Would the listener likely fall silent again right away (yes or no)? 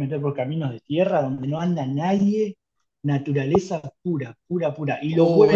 no